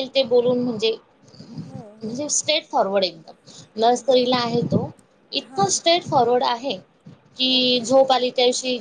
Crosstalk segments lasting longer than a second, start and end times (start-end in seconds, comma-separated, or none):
none